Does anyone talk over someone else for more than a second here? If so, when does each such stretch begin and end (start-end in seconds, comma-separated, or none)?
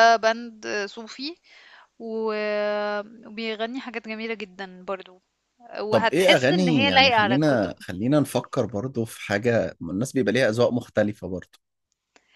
5.9-7.7